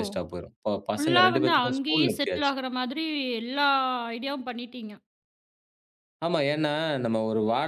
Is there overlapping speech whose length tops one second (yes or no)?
yes